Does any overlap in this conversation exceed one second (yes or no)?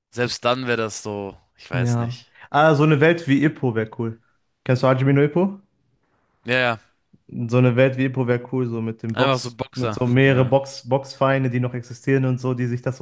yes